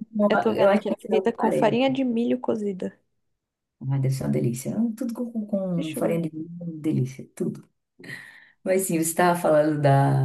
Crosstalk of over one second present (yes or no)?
yes